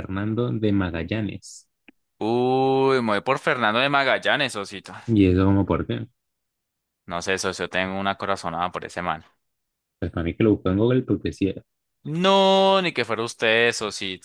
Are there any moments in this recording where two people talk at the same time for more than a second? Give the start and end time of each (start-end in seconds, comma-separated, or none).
none